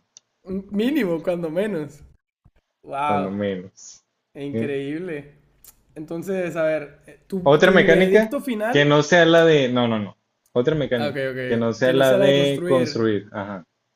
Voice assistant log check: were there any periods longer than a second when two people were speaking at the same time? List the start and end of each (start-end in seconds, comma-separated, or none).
7.4-9.0, 11.0-13.1